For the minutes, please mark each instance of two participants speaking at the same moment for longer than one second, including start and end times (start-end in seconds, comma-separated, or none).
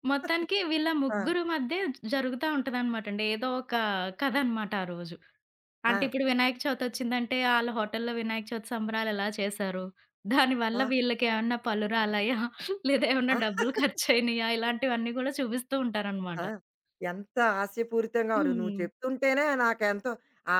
none